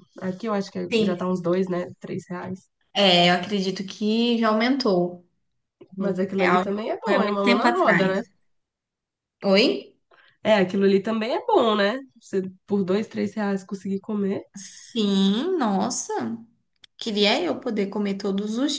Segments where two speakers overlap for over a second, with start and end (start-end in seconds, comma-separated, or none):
6.0-8.2